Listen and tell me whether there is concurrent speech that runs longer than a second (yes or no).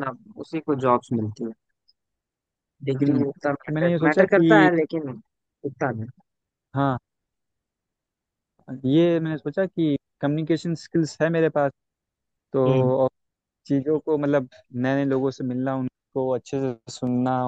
yes